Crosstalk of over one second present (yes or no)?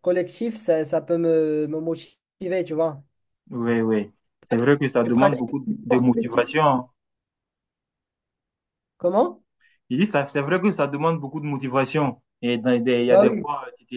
yes